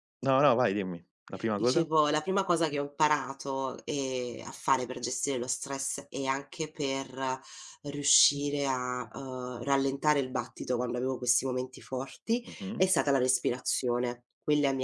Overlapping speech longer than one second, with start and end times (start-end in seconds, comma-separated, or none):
none